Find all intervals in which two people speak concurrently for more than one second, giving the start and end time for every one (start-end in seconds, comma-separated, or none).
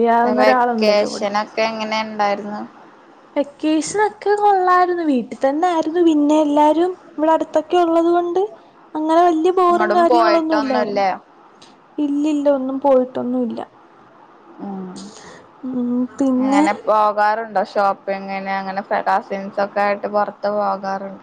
9.7-11.0